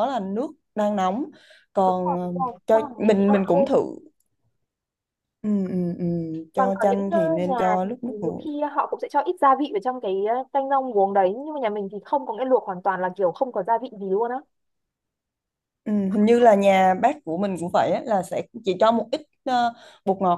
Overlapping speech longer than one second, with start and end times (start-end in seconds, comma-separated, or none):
1.9-3.7, 6.5-8.5